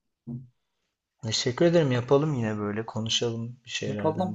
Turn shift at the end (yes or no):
yes